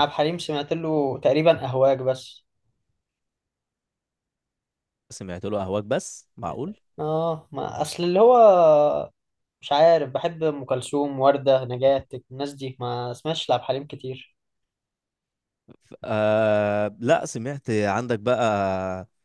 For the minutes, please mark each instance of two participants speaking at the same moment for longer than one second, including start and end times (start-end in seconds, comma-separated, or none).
none